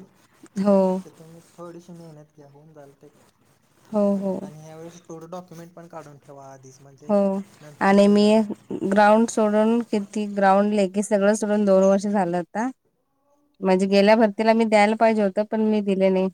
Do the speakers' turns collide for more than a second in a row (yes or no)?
no